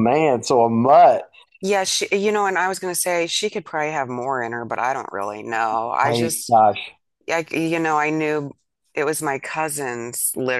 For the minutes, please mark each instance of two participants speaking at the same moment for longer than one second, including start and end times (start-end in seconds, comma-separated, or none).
none